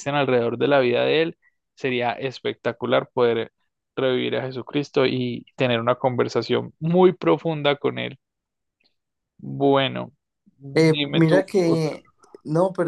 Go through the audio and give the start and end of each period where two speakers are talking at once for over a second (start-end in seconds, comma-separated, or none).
10.7-12.0